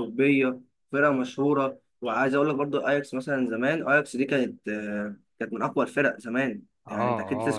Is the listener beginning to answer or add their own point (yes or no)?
yes